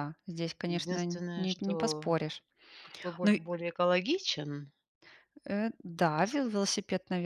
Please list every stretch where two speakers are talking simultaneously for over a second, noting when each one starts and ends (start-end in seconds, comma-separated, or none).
0.6-2.1